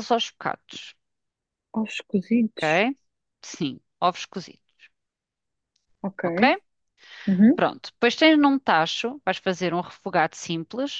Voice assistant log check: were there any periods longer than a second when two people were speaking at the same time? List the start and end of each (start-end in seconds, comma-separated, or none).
none